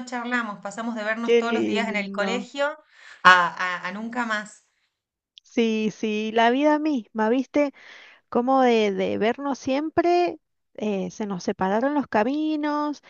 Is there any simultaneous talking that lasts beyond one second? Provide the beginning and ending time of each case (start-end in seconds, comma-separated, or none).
1.2-2.5